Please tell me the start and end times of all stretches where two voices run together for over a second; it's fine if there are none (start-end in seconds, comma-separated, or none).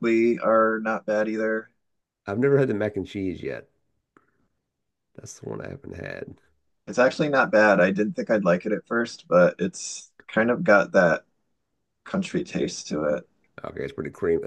none